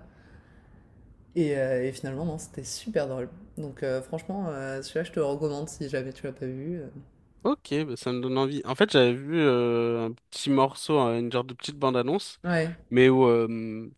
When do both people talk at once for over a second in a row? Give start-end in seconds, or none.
none